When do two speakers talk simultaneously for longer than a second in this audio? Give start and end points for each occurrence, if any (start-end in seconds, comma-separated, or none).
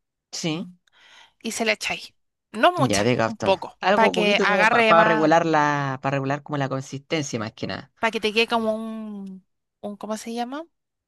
2.8-5.3